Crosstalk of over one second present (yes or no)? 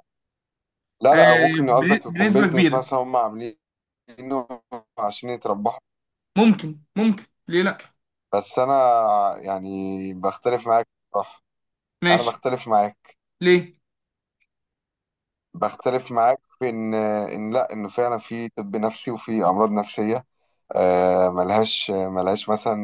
yes